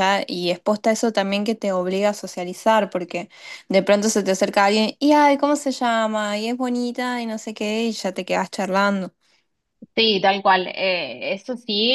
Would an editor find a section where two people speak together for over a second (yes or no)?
no